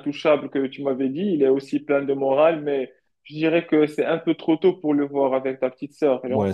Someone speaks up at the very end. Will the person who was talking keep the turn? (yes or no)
no